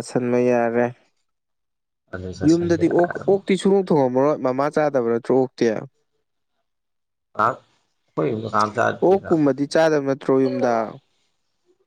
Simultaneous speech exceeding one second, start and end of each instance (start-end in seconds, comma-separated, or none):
none